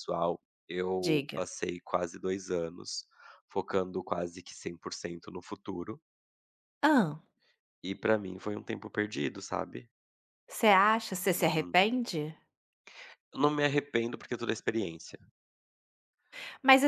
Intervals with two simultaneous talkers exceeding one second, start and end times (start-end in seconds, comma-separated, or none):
none